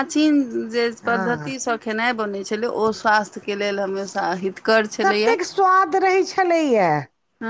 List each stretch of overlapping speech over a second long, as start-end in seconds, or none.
none